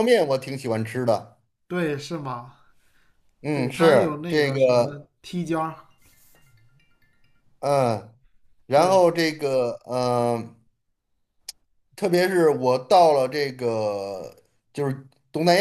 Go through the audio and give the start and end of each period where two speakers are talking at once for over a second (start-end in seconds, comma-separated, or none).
3.5-5.1